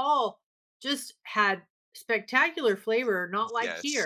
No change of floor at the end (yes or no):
yes